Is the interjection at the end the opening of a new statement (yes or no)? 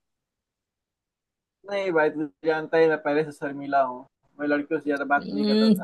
yes